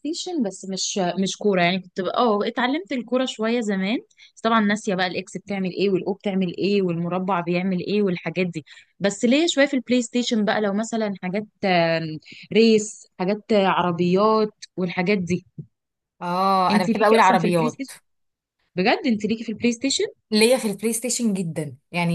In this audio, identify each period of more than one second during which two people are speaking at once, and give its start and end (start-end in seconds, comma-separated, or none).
16.7-17.9